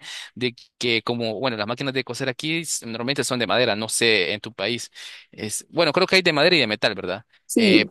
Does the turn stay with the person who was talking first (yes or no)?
yes